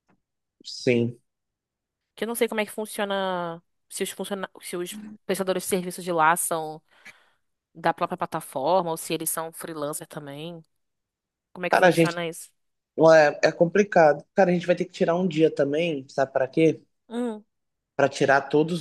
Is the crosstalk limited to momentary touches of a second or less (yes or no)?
yes